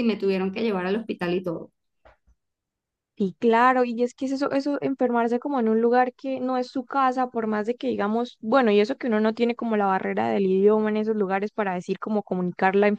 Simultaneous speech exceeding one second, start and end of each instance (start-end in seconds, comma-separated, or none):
none